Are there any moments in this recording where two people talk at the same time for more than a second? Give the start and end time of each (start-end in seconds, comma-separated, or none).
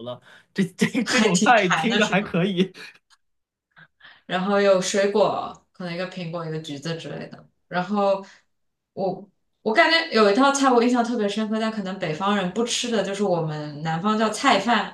1.0-2.4